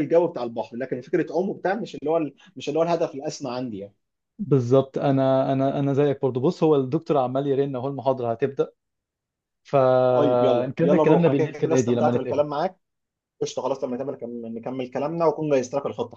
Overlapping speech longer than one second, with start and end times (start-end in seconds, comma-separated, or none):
10.1-12.4